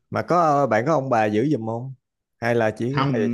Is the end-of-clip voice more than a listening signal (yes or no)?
yes